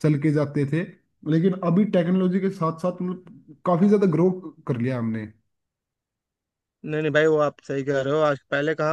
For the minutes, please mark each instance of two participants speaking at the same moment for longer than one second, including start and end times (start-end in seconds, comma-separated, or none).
none